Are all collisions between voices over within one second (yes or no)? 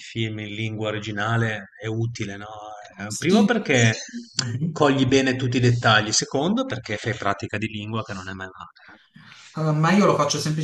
yes